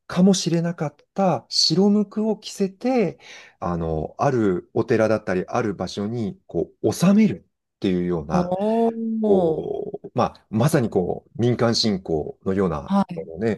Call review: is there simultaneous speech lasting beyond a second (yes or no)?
no